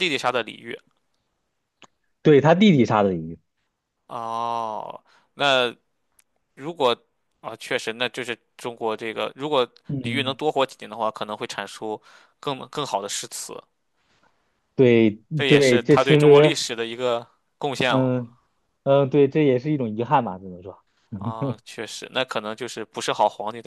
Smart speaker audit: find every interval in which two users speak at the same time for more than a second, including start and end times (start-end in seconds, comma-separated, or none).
15.3-16.6